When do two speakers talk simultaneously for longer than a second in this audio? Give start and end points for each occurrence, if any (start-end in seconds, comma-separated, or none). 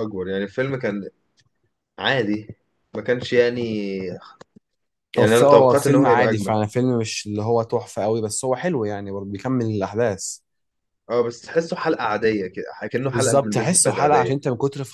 5.2-6.5, 13.1-14.3